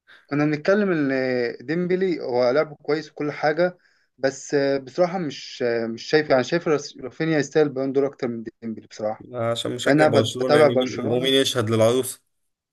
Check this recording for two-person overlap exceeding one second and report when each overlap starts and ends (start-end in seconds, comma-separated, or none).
9.8-11.3